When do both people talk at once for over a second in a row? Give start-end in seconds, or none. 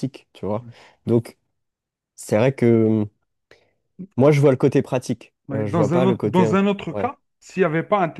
5.5-7.1